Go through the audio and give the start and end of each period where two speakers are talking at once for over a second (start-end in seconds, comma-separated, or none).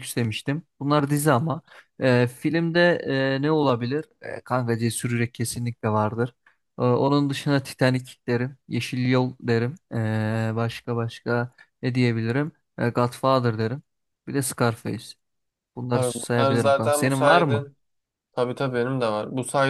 15.9-17.7